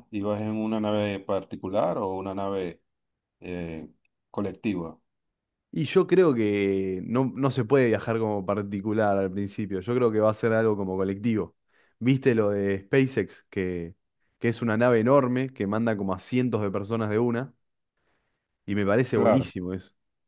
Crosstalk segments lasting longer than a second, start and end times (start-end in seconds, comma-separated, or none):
none